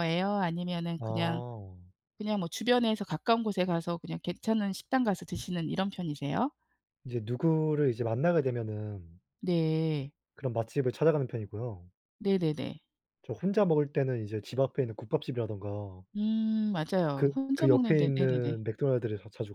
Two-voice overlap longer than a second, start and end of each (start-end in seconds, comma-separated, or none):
17.1-18.6